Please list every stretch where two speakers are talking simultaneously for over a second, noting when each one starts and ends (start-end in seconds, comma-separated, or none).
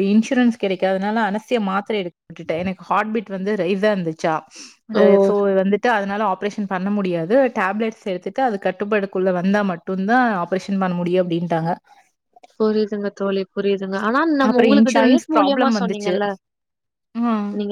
14.5-16.2